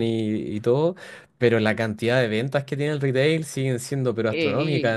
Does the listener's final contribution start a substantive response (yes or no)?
no